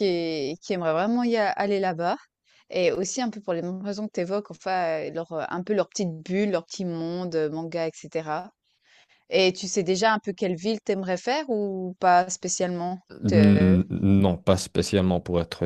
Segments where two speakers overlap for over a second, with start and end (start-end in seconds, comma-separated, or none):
none